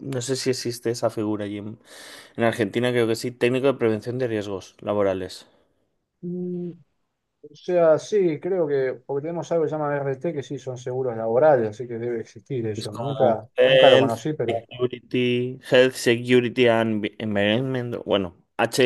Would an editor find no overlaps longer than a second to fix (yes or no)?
no